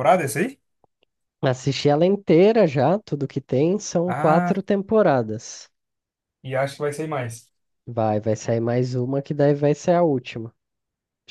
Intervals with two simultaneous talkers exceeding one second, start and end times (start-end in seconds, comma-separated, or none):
none